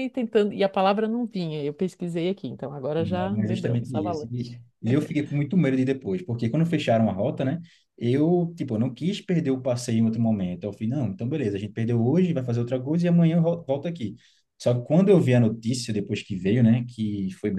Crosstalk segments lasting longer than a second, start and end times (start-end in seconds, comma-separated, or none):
3.0-4.6